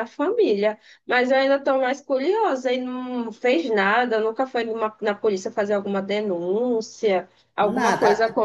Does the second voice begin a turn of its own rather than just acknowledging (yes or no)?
no